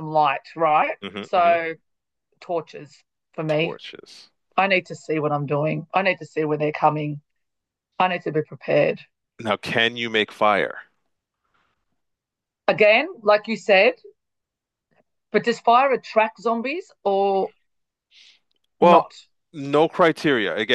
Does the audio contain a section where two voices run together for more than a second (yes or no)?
no